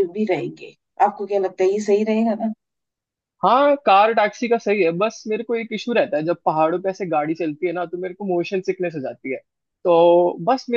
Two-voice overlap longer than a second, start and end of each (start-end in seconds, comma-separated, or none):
none